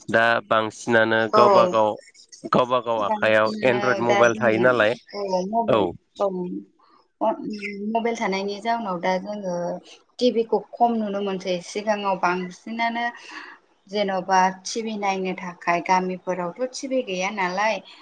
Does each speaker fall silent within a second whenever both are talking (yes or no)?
no